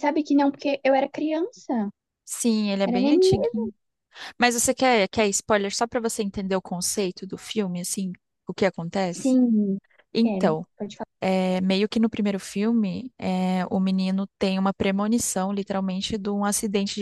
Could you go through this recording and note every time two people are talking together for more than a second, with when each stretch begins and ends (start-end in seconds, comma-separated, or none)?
none